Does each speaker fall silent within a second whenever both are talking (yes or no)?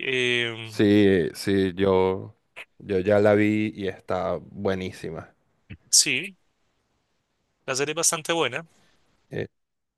yes